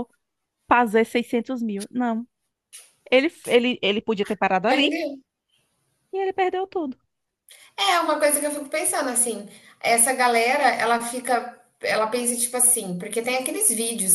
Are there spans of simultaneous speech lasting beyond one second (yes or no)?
no